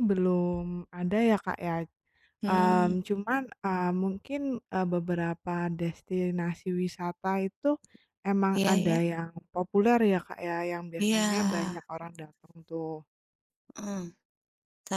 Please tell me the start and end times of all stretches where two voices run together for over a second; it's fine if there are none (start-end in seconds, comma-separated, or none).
none